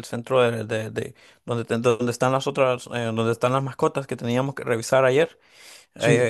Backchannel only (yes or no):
yes